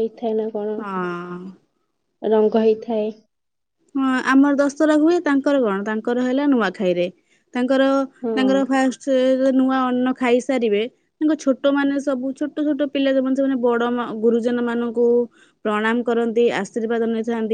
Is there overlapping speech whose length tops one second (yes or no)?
no